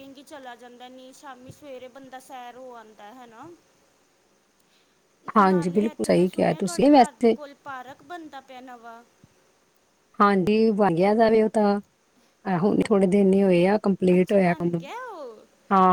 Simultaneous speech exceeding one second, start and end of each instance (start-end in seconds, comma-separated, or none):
5.4-7.4